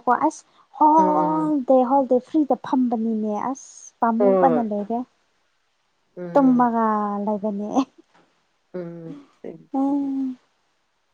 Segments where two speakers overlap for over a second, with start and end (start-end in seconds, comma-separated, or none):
none